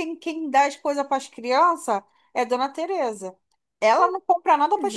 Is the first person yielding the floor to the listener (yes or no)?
no